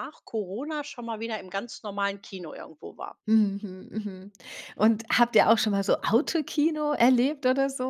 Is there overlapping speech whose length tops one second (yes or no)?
no